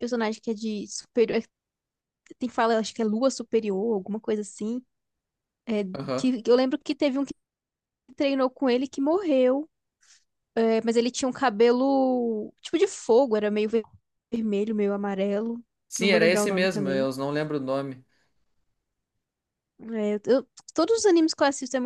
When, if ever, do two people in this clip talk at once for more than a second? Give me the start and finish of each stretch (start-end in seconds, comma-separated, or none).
15.9-17.1